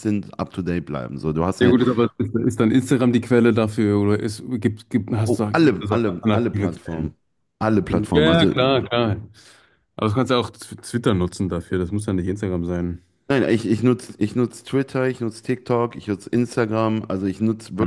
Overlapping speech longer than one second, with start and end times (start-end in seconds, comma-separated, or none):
5.2-7.1